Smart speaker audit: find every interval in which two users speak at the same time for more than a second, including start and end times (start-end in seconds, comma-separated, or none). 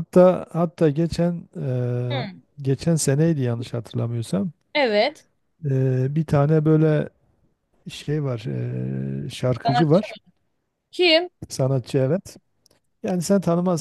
none